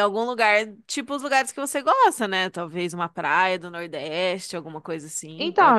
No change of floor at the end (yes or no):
no